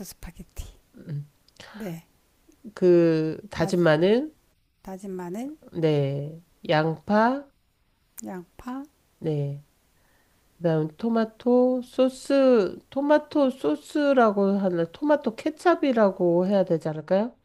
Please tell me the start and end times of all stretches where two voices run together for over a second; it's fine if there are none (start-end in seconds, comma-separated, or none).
none